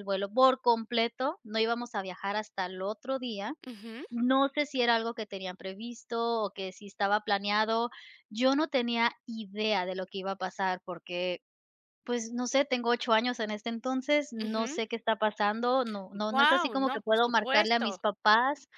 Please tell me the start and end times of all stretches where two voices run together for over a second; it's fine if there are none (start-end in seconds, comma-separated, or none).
16.3-18.0